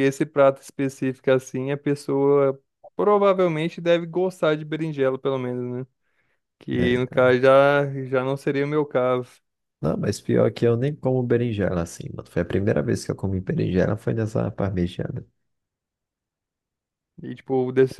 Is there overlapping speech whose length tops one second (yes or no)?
no